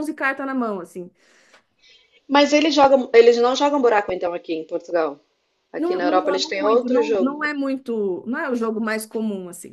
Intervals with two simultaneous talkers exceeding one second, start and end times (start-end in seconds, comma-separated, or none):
5.8-7.3